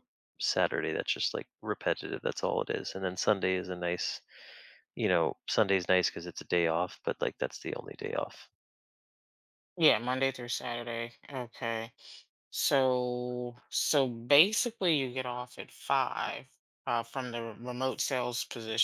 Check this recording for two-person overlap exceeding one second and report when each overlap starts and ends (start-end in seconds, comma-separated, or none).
none